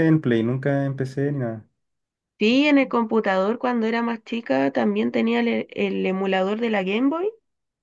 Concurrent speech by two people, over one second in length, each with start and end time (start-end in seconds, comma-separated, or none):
none